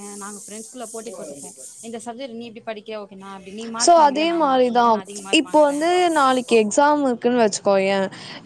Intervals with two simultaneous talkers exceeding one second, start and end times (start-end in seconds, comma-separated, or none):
none